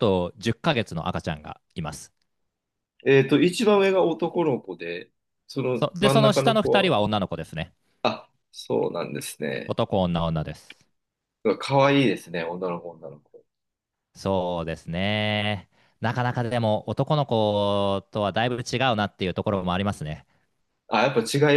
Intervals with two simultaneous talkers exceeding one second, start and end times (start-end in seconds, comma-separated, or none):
5.7-7.0